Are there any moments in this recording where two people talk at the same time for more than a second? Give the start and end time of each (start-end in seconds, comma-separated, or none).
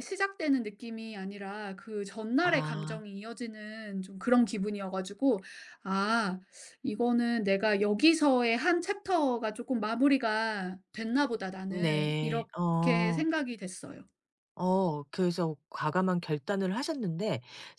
11.7-13.2